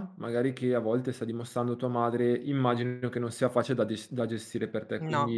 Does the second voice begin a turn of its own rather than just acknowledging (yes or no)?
no